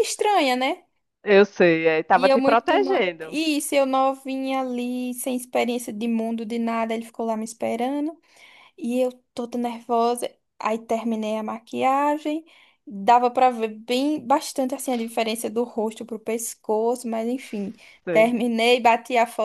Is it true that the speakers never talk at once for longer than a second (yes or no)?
no